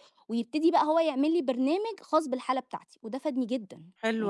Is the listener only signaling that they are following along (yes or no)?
no